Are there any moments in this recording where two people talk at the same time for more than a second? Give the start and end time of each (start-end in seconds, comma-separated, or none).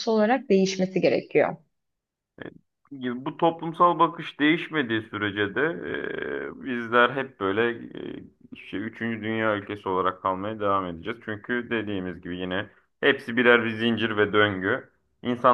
none